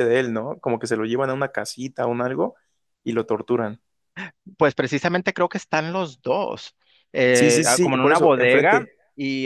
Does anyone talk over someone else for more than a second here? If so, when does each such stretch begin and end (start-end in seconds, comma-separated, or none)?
7.3-8.9